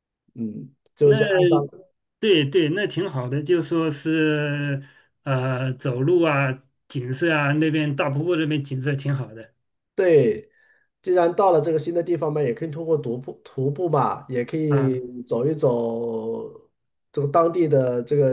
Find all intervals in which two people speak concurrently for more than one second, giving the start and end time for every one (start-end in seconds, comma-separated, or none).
none